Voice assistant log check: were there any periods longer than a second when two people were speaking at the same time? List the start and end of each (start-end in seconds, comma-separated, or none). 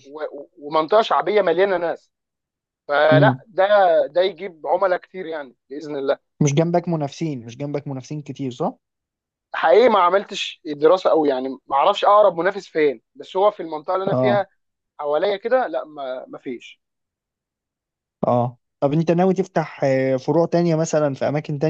none